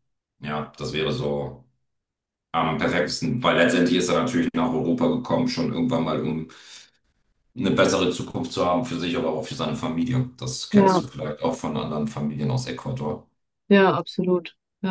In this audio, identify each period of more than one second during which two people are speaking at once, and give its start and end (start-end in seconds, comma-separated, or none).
none